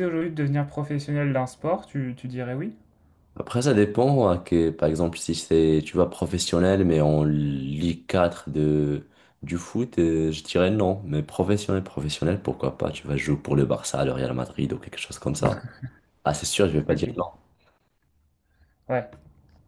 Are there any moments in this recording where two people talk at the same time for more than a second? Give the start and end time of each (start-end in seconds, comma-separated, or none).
none